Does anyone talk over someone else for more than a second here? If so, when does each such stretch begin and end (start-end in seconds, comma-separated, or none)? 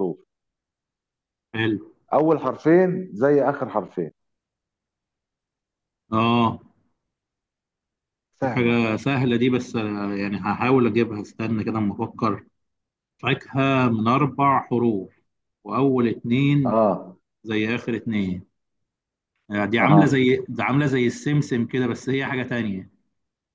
none